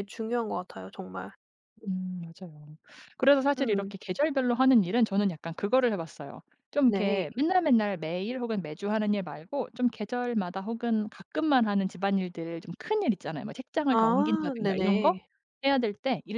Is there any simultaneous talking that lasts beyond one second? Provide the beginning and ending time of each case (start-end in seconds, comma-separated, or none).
13.9-15.2